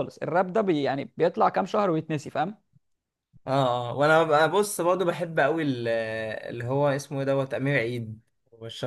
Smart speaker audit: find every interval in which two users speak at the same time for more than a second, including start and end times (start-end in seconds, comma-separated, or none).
none